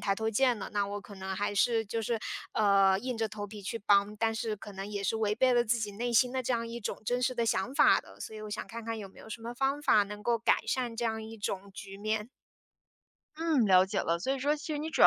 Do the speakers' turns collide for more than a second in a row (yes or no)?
no